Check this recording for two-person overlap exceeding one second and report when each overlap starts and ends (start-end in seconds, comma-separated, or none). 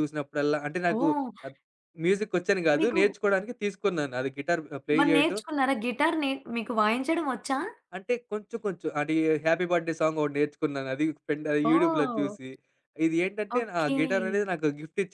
none